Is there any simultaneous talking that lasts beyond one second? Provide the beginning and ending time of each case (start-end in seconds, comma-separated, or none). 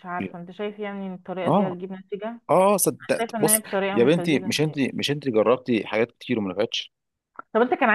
3.2-4.8